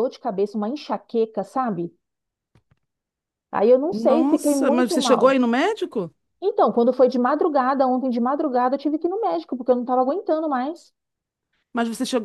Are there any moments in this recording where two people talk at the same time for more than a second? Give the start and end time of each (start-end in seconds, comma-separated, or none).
3.9-5.3